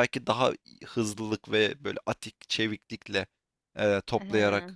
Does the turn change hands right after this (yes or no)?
no